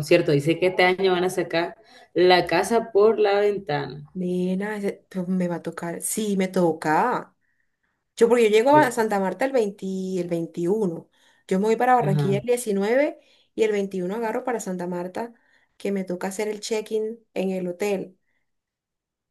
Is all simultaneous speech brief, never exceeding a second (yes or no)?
yes